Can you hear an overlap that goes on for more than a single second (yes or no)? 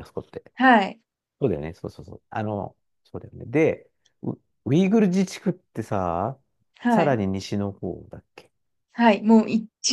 no